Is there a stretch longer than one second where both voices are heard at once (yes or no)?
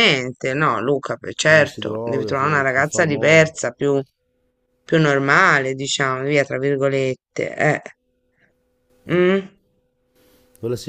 yes